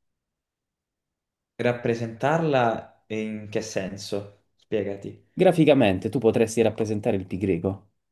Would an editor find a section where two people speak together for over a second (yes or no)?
no